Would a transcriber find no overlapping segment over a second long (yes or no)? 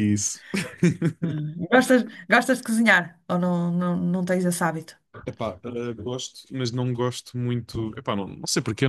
yes